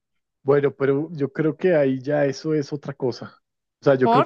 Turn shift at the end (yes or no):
no